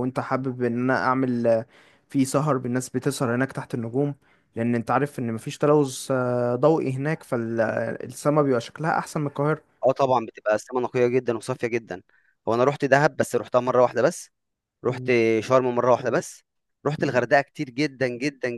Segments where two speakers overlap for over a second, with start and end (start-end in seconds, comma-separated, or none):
none